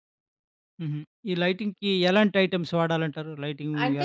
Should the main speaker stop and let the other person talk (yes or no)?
yes